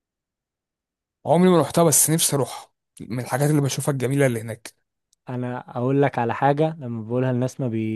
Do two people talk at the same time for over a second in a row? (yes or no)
no